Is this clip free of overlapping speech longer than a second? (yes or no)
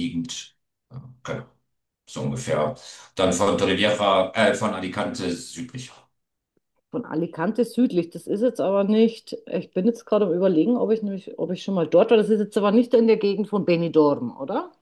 yes